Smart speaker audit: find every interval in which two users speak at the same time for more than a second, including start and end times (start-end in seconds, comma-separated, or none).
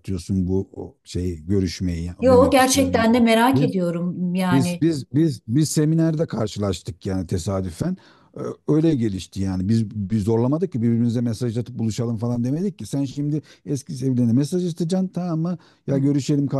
2.2-3.8